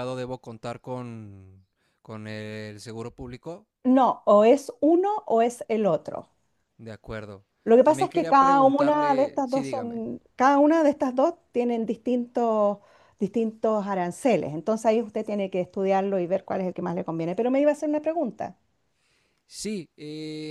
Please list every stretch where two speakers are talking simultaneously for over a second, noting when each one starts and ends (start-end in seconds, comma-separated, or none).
7.8-10.0